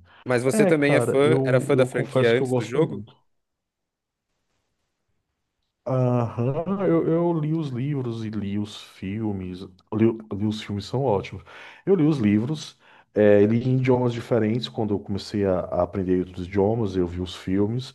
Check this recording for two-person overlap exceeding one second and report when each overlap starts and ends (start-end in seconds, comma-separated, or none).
0.5-3.1